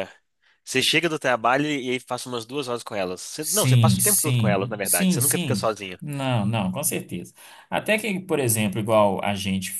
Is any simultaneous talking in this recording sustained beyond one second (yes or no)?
yes